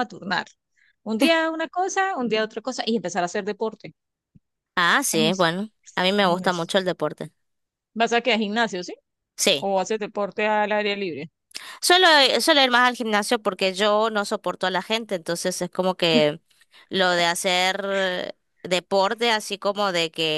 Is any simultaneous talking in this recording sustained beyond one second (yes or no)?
yes